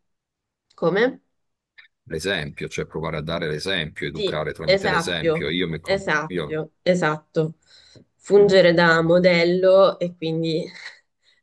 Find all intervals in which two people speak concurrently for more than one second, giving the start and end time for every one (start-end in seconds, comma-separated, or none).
4.1-6.6